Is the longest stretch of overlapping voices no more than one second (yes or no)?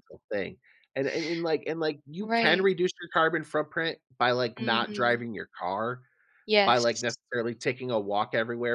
yes